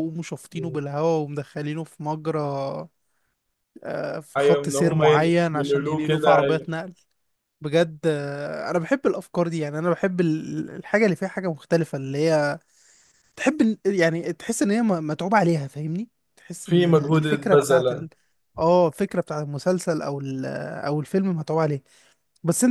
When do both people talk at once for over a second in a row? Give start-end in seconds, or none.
4.4-6.7, 16.6-18.1